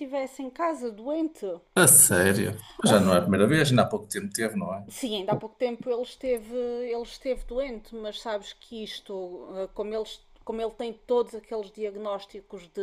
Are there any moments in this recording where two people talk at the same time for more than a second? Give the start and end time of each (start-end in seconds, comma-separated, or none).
none